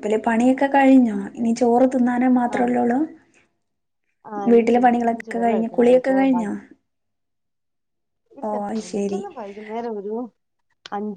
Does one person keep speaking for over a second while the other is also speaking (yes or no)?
yes